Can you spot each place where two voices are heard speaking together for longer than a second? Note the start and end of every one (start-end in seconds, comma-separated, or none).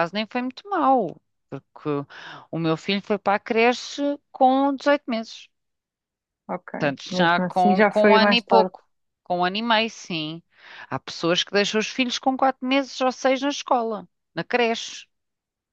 7.1-8.7